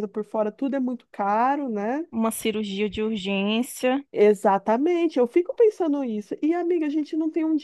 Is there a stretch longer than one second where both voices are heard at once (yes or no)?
no